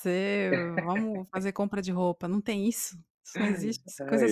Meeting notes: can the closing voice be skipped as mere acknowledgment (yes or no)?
yes